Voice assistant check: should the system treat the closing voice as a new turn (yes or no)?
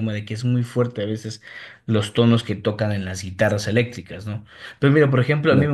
no